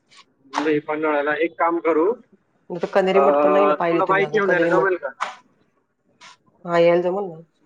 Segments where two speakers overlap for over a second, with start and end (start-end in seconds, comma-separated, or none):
3.0-4.9